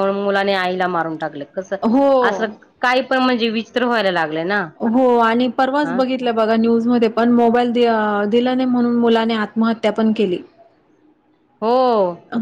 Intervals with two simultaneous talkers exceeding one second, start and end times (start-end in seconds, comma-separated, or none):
none